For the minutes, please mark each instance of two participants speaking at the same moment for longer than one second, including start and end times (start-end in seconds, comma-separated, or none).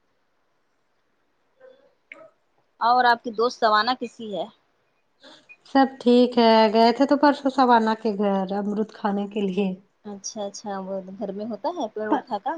none